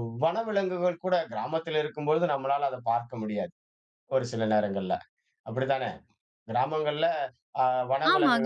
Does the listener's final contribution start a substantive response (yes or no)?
yes